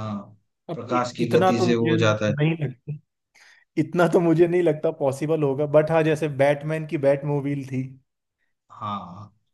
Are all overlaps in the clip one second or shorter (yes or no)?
no